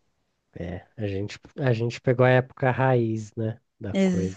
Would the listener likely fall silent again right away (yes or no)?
no